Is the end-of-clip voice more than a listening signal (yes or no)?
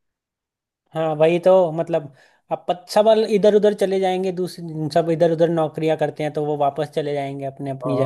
yes